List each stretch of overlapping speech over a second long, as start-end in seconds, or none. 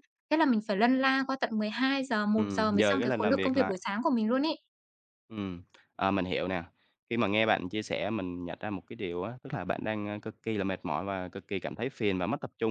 2.3-3.8